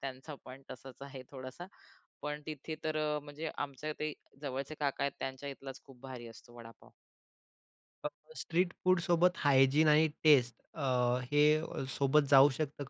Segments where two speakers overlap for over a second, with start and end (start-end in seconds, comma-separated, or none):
none